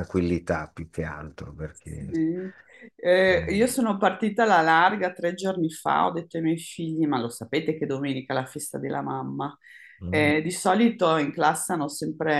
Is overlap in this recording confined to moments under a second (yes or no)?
yes